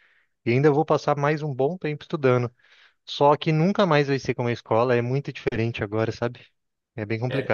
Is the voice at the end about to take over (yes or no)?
yes